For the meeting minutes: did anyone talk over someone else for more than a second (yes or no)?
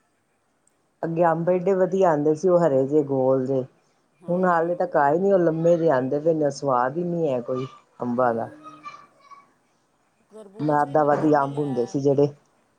yes